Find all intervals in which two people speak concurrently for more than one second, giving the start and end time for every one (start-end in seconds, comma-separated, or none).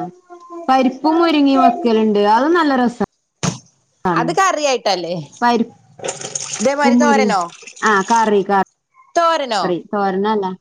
none